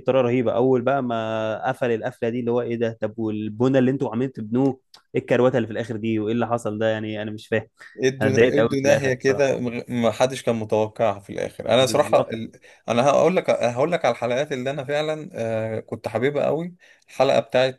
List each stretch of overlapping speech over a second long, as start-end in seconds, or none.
8.2-9.6